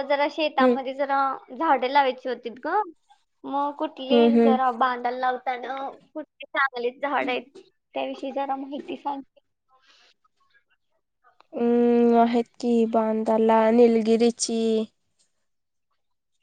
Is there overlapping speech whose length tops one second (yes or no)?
no